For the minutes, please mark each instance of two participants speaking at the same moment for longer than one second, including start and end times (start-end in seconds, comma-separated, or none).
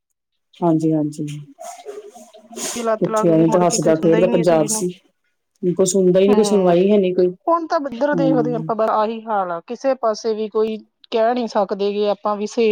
3.0-4.8